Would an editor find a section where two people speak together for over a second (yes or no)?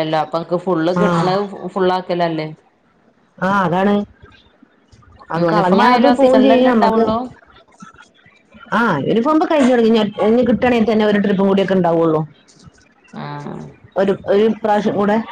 yes